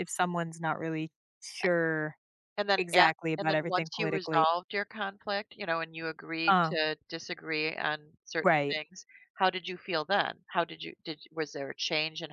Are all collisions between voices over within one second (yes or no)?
no